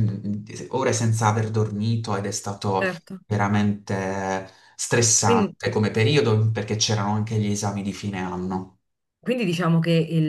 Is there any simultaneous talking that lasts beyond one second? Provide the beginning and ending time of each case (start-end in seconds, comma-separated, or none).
none